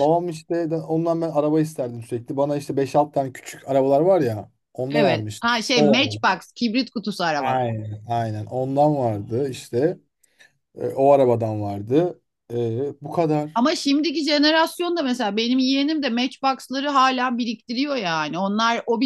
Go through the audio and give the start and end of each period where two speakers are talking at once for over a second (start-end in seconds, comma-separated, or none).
4.9-6.4